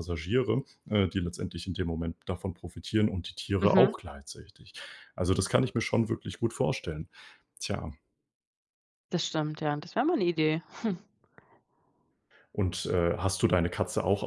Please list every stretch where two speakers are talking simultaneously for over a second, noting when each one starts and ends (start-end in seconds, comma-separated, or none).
none